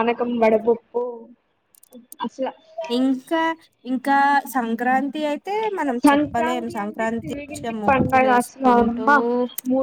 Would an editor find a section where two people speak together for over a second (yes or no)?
yes